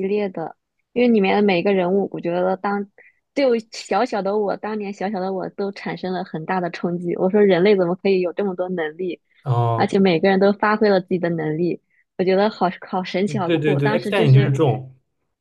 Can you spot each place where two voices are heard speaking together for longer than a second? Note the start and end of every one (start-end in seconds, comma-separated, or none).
13.3-14.5